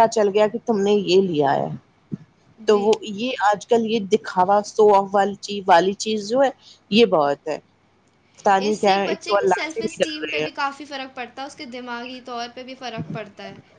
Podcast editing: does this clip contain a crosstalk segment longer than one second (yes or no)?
yes